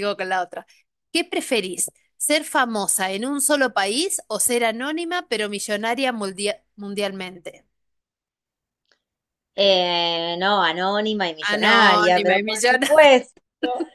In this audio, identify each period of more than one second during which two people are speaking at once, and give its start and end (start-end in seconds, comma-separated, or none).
11.4-12.9